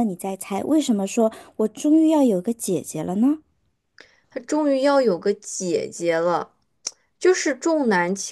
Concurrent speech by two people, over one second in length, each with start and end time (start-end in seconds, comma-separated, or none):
none